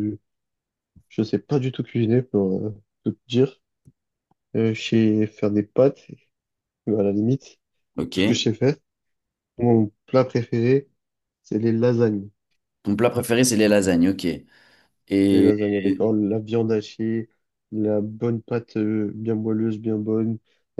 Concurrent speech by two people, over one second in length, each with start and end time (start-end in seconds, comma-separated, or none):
none